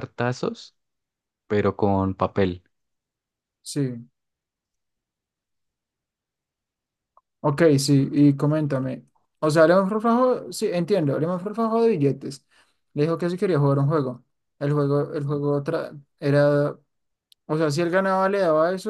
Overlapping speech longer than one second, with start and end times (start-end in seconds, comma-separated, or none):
none